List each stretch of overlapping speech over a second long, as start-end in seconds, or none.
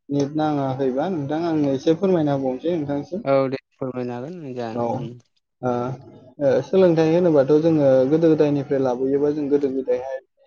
none